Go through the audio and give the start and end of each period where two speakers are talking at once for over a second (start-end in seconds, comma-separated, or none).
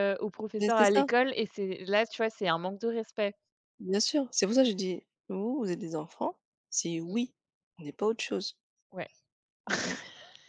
none